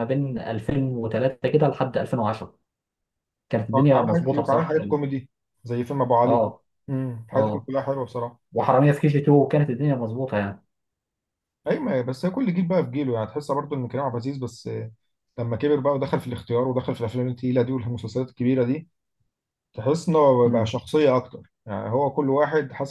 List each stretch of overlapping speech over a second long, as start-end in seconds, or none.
3.7-5.0